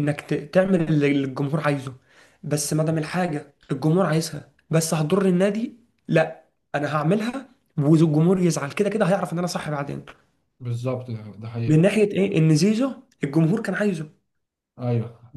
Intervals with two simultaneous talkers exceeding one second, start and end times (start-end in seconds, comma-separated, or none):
none